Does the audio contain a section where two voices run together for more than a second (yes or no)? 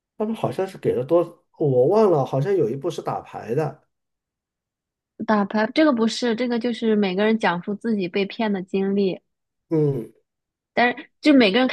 no